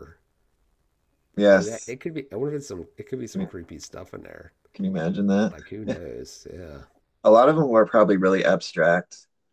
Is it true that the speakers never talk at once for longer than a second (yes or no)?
yes